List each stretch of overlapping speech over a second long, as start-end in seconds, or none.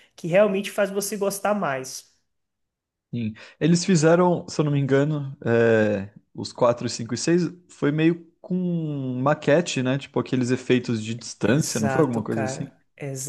11.4-12.7